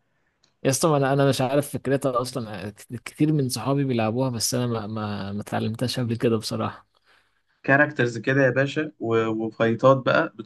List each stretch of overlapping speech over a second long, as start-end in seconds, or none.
none